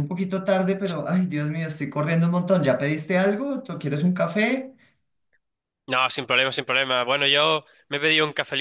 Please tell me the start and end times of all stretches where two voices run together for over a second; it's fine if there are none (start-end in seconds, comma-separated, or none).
none